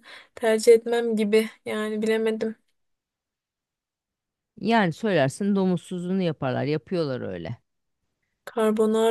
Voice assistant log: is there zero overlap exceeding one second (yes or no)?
yes